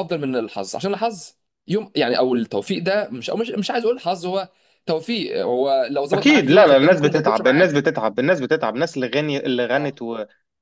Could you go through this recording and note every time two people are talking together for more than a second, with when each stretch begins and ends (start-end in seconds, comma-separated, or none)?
6.1-7.8